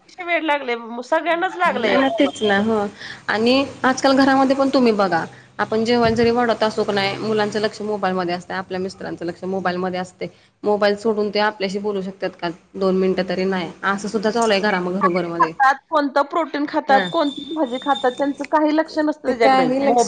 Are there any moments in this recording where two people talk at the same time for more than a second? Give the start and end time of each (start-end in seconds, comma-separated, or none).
none